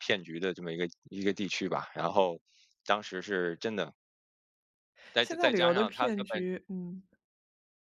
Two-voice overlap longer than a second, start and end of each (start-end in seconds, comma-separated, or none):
5.2-6.4